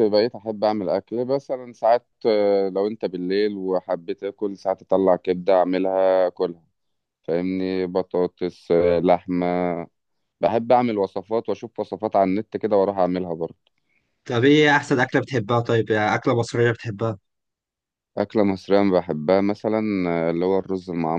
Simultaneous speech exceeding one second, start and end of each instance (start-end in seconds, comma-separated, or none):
none